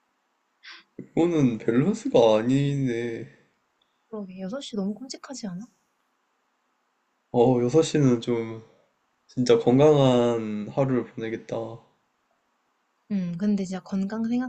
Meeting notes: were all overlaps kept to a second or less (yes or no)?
yes